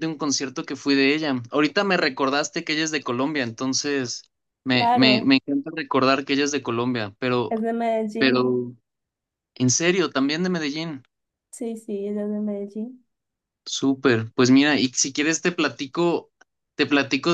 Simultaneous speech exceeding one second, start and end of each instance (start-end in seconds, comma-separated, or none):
none